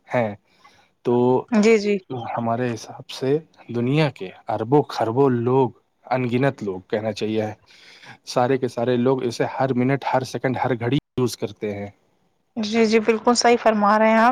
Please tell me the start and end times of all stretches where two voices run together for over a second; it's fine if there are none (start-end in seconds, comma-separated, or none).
none